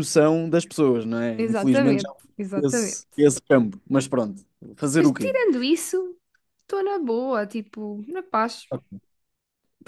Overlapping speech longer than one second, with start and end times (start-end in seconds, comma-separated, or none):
1.4-3.0